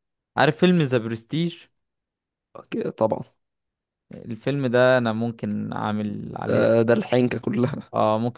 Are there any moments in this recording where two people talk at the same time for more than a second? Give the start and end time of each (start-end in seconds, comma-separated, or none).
none